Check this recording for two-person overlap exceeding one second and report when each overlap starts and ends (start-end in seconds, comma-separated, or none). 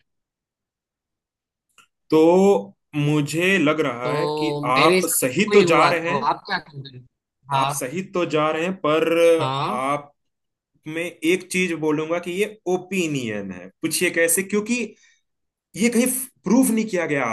4.0-6.3